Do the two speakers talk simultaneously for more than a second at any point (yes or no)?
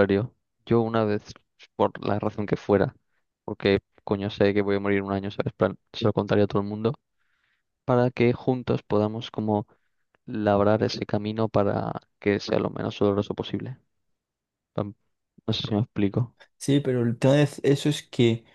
no